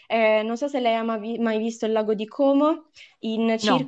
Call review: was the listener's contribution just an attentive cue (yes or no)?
yes